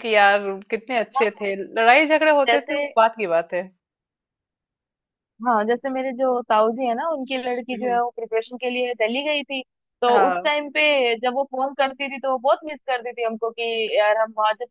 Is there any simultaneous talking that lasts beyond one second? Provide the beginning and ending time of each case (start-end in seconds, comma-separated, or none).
none